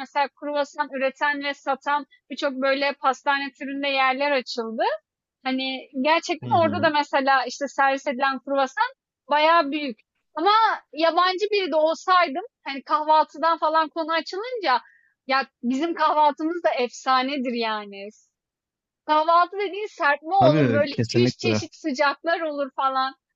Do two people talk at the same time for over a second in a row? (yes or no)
yes